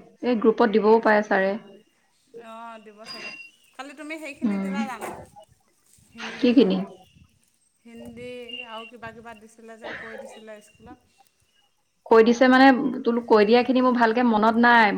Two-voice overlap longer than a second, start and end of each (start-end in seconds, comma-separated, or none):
none